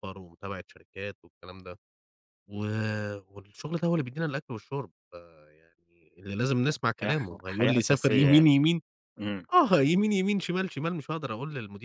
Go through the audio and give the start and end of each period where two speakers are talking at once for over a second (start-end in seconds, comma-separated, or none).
7.0-8.5